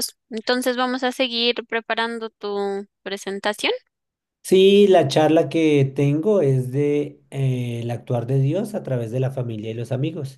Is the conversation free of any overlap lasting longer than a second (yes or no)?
yes